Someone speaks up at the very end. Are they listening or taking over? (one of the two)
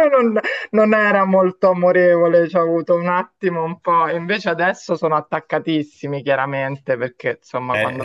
taking over